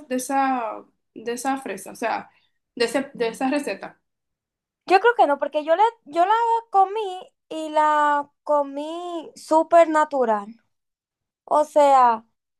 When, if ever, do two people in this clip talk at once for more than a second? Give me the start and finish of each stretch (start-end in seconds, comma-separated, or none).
none